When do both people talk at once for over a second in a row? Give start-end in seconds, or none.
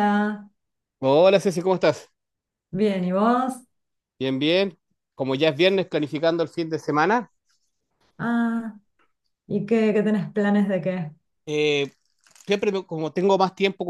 none